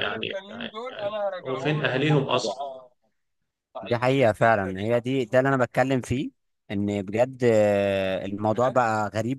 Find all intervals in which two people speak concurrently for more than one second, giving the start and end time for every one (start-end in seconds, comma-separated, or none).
none